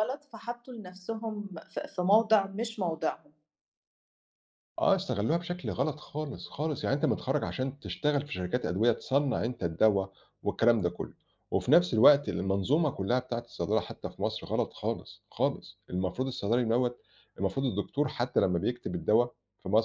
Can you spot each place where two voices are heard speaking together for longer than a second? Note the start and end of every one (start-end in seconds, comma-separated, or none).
none